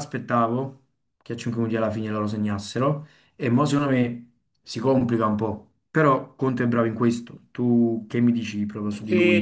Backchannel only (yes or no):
no